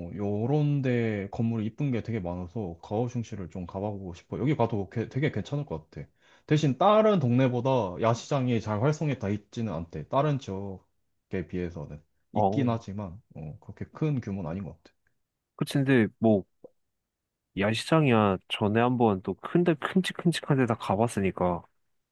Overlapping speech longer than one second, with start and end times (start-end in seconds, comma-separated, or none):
none